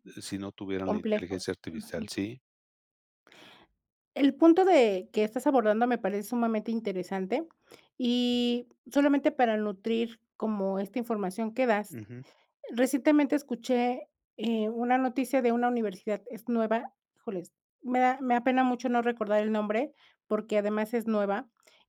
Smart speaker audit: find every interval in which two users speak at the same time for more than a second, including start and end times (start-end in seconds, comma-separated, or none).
0.8-2.1